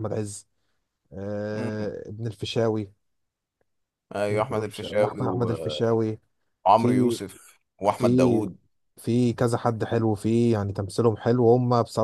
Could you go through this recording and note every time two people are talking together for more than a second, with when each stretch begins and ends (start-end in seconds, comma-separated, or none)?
4.3-5.8